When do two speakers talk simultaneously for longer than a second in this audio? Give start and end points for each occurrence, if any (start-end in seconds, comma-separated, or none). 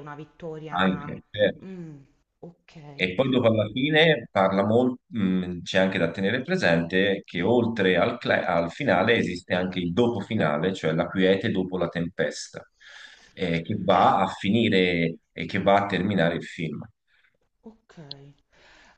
none